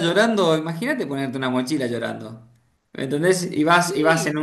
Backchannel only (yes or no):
yes